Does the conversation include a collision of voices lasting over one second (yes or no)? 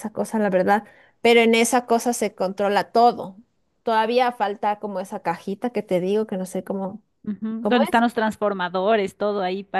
no